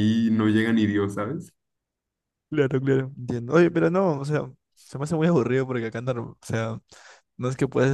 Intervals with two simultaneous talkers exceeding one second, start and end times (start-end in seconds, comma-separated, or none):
none